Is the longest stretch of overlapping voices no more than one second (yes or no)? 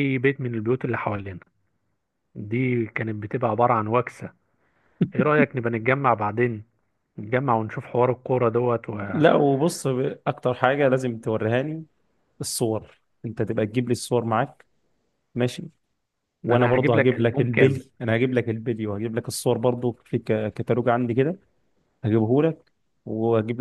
no